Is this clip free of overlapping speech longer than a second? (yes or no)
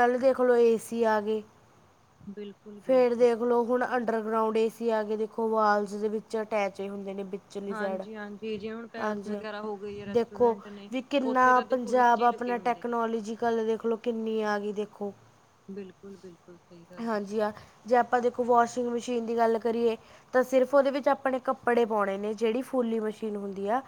no